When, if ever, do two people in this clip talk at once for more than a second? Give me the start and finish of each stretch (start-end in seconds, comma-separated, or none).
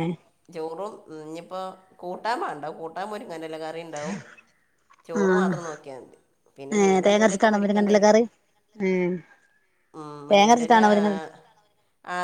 6.8-8.1